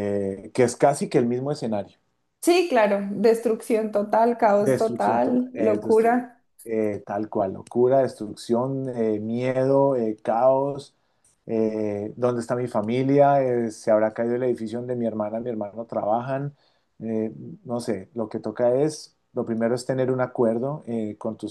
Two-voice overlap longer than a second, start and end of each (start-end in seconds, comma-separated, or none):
4.6-6.2